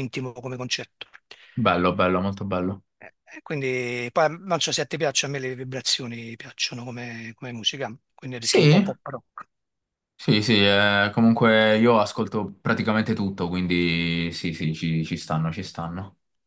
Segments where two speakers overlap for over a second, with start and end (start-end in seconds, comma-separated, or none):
none